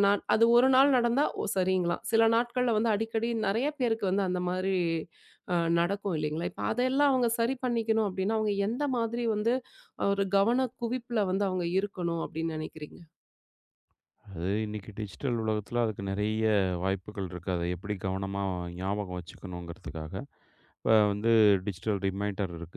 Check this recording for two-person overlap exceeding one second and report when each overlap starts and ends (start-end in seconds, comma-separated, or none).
none